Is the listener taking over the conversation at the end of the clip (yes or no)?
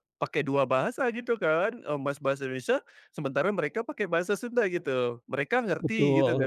yes